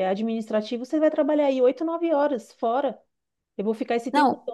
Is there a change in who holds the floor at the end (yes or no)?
no